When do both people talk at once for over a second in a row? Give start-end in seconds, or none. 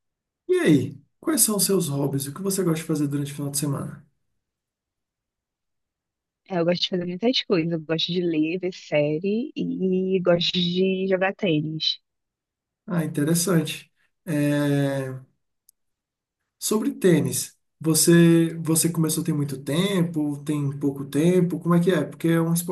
none